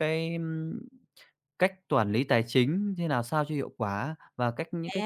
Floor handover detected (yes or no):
no